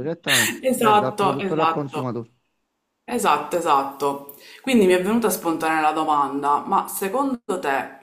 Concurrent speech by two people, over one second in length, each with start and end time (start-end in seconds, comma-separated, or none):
0.6-2.1